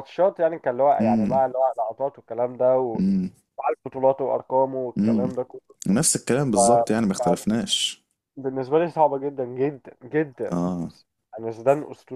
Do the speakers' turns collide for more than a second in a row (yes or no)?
no